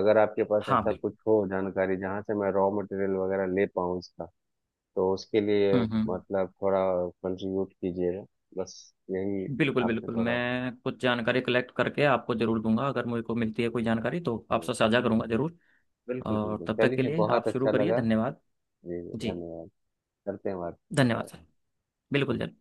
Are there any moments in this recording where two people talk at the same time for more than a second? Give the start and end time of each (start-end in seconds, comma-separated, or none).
16.2-18.0